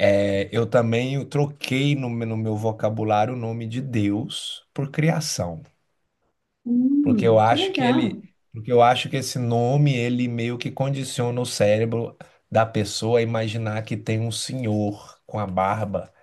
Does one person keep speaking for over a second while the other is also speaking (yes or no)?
yes